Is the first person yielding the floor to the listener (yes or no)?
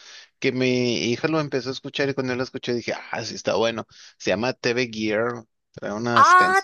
no